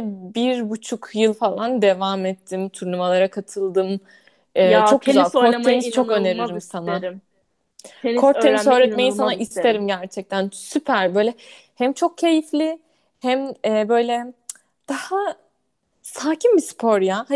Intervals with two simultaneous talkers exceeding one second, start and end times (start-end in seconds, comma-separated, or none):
4.6-7.0, 8.2-9.8